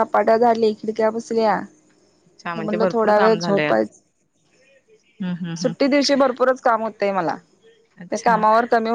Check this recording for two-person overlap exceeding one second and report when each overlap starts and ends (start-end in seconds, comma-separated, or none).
2.6-3.9